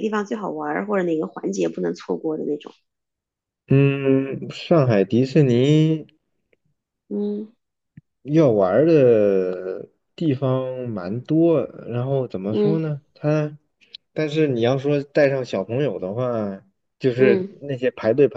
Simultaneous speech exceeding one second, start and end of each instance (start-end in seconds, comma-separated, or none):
none